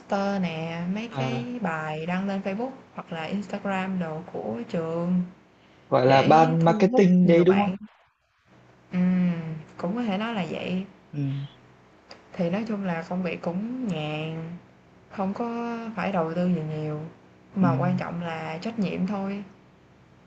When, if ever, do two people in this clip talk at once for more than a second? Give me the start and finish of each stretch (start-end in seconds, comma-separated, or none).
6.0-7.7